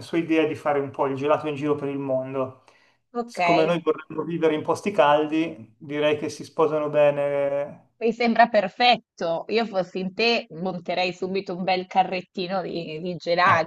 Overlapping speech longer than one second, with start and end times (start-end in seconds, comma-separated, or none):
none